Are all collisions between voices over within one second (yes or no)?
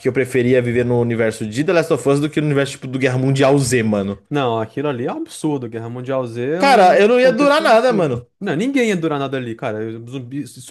no